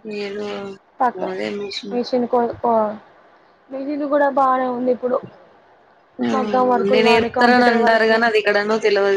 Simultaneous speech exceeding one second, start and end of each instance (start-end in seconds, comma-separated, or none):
6.4-8.2